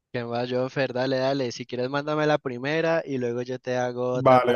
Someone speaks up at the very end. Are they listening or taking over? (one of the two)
taking over